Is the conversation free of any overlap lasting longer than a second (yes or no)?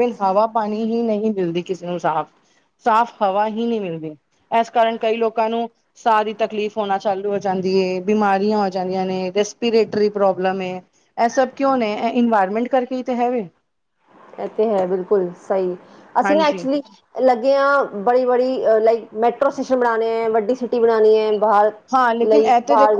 yes